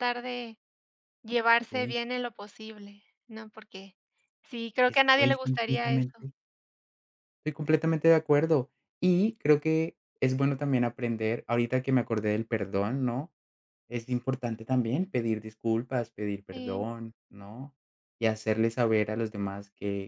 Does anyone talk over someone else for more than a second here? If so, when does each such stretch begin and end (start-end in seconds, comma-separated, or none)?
4.8-6.3